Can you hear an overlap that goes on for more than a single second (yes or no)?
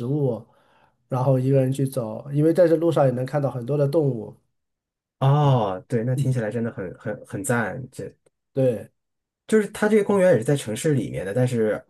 no